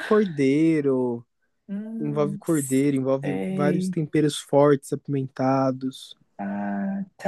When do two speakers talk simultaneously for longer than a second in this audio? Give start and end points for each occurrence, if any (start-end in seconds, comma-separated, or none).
2.0-3.9